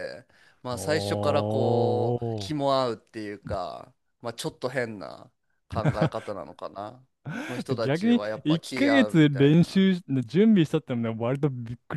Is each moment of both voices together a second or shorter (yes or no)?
no